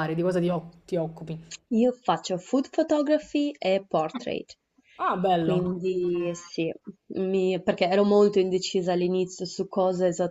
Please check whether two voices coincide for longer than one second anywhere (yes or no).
no